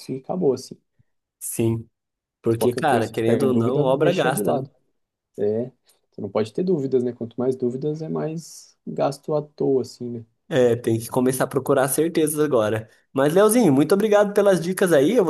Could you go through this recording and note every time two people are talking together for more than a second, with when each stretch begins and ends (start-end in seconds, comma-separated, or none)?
2.5-4.7